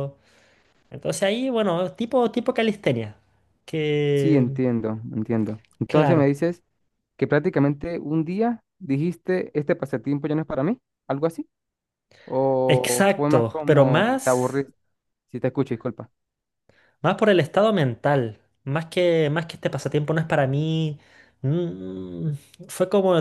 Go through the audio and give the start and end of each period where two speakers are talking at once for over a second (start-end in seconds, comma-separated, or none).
12.7-14.7